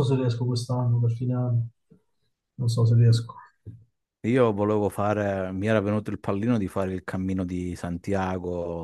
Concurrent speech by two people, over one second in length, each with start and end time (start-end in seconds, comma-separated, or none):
none